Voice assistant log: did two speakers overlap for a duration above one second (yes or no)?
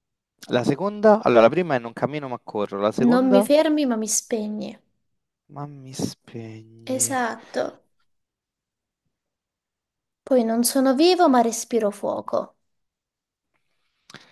no